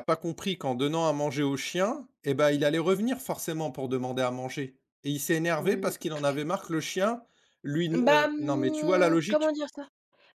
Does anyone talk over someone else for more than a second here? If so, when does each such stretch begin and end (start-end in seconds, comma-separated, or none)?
7.9-9.5